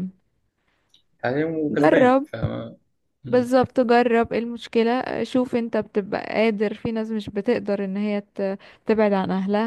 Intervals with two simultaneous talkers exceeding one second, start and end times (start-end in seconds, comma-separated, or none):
none